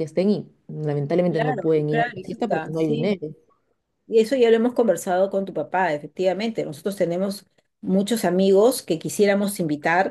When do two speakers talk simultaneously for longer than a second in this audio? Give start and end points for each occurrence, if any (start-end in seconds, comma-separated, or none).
1.3-3.2